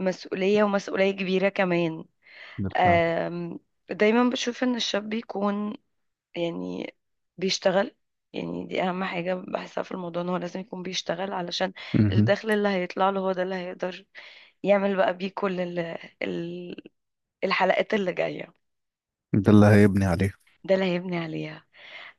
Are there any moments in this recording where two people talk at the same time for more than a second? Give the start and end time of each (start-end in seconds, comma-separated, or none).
none